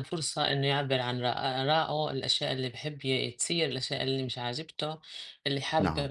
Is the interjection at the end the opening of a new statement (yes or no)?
no